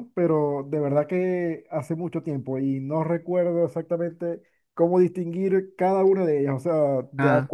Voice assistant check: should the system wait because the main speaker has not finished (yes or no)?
yes